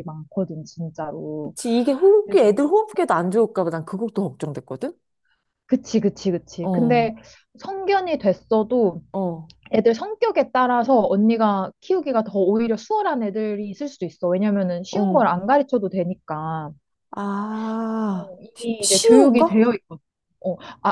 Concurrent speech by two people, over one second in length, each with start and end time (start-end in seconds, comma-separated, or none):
18.1-19.7